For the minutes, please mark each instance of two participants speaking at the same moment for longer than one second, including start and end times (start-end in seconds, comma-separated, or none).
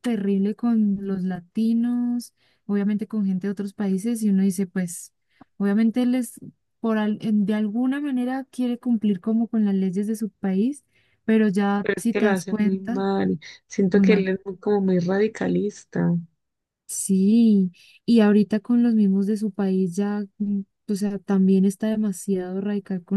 11.8-13.0